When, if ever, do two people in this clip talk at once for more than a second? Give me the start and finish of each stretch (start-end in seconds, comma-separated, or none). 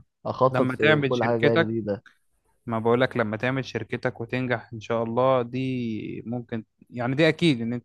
0.5-1.8